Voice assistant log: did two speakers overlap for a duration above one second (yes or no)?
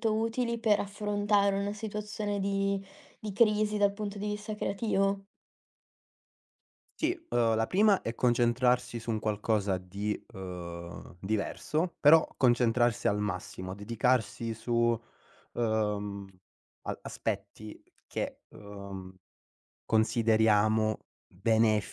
no